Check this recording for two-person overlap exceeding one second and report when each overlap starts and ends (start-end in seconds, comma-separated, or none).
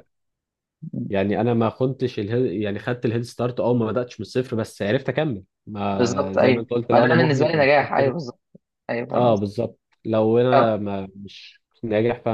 5.9-8.1